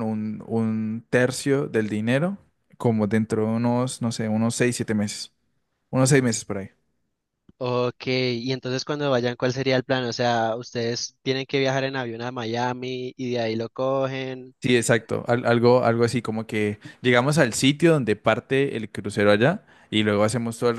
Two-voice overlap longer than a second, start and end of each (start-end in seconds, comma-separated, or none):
none